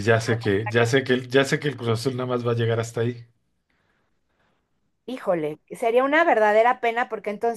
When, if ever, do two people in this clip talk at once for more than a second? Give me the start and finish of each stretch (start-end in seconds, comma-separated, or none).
none